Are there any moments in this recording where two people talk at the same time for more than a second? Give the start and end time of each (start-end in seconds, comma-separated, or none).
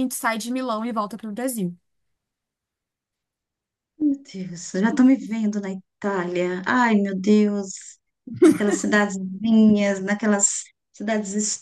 none